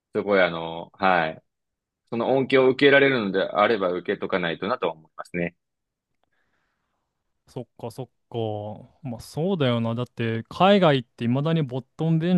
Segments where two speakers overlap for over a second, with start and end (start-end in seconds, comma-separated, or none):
none